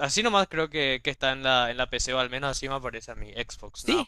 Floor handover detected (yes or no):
yes